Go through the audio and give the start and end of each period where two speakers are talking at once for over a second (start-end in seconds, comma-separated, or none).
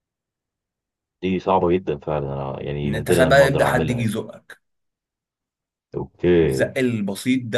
2.9-4.1